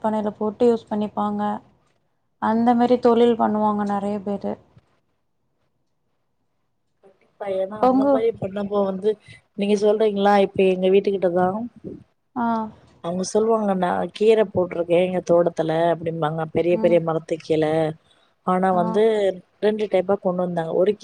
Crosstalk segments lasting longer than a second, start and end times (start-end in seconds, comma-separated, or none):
none